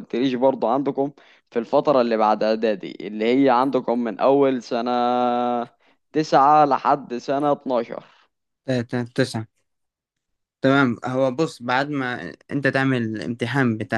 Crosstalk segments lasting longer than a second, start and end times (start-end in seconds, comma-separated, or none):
none